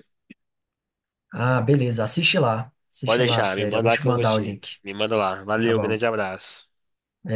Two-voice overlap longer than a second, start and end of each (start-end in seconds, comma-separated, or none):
3.0-4.8